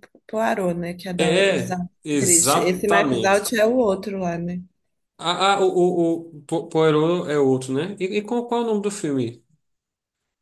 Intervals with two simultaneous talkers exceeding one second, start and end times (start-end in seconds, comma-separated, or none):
1.2-3.5